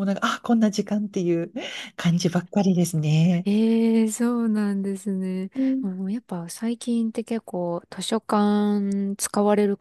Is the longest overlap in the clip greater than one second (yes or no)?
no